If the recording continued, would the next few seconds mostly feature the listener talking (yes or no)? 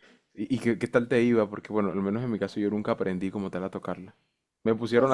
yes